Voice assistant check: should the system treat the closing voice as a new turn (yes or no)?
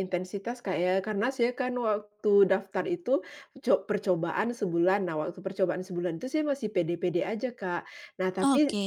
no